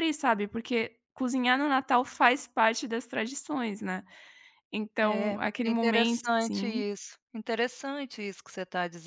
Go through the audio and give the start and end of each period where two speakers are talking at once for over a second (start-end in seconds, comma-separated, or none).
5.0-6.8